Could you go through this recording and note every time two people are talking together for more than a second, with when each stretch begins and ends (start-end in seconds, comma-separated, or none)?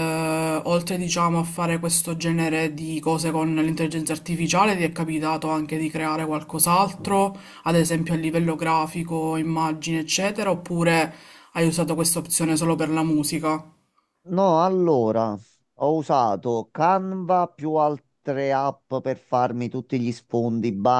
none